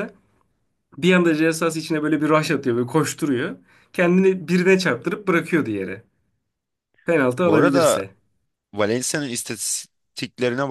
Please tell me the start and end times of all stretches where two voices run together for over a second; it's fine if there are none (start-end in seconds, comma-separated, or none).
none